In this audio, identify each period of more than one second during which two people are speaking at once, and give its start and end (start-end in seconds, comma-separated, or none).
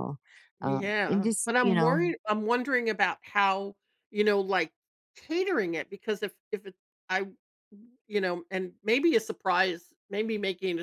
0.6-2.0